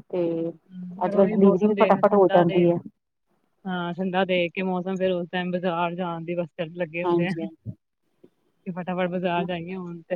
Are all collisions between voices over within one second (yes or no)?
no